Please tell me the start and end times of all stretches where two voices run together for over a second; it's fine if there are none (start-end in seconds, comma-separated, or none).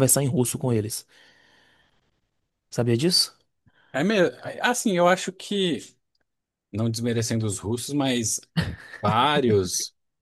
none